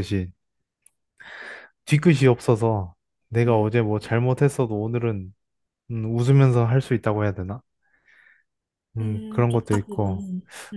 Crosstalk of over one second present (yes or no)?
yes